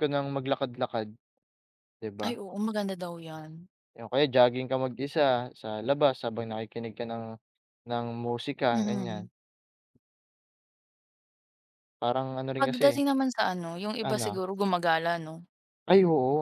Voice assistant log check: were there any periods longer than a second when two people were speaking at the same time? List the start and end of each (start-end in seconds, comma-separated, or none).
none